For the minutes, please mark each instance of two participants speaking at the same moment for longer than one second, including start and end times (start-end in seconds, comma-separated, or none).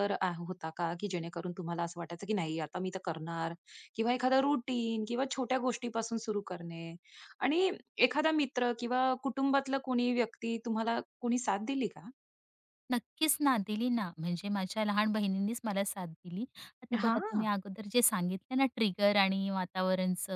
none